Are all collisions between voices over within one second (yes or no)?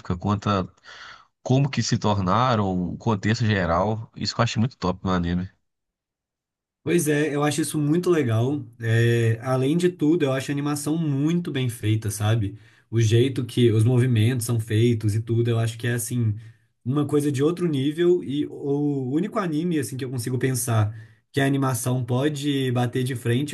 yes